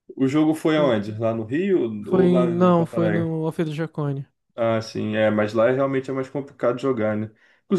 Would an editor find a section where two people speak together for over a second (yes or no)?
yes